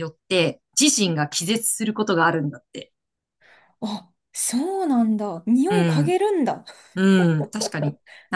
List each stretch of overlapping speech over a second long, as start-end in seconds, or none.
none